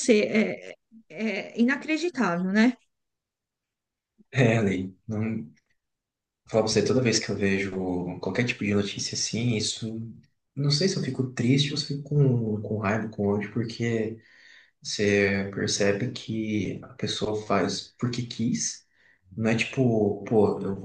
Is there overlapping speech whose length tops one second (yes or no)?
no